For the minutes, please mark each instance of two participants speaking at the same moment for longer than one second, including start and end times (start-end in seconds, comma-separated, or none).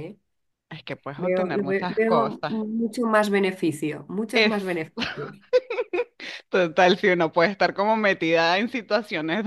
1.2-2.5